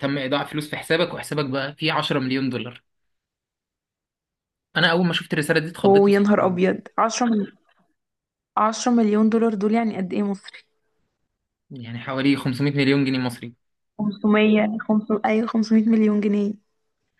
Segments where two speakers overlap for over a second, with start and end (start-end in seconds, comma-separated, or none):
none